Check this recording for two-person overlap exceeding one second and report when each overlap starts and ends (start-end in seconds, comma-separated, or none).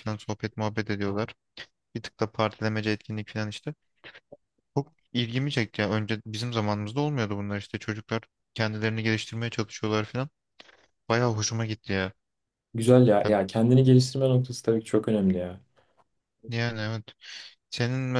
none